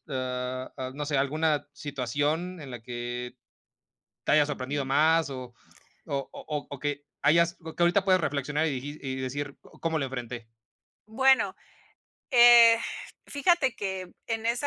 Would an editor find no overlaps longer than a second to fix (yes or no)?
yes